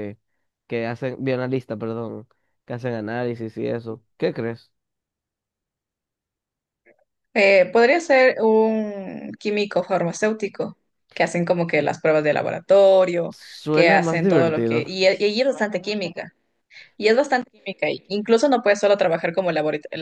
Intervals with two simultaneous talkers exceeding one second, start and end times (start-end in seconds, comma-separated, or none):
13.3-14.9